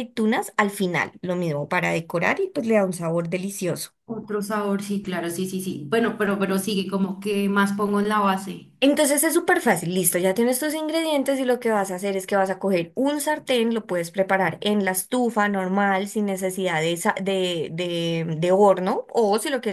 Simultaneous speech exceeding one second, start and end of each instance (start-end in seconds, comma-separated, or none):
none